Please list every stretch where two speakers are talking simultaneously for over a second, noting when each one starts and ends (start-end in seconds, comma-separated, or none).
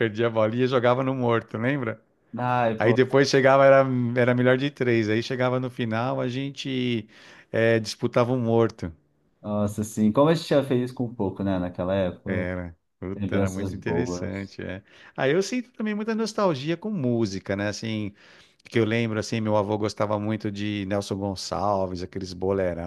13.1-14.5